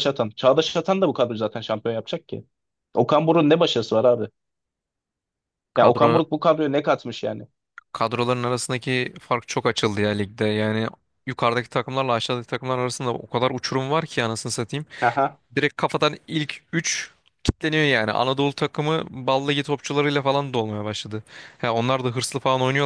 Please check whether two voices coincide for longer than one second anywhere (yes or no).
no